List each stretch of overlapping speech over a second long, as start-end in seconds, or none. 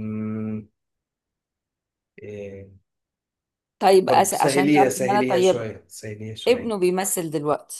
4.1-5.7